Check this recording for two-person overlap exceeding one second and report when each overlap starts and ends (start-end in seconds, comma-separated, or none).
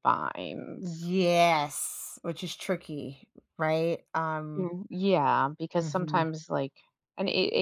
none